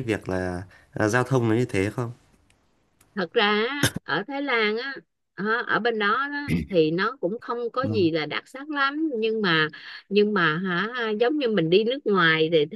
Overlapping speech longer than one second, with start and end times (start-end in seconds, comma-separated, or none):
none